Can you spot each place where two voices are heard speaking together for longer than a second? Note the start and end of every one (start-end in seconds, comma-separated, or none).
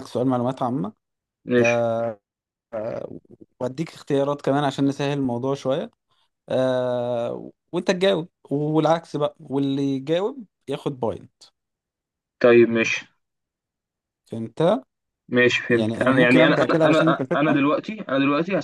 15.7-17.6